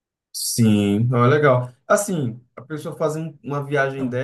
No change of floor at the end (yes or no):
yes